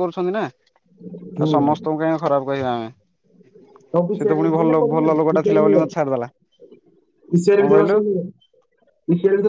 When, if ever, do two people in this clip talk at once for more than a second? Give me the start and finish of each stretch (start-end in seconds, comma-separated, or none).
4.2-5.9